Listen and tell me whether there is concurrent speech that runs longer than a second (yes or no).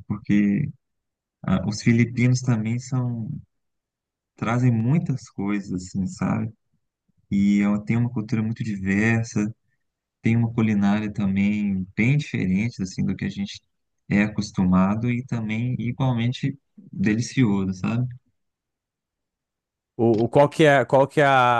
no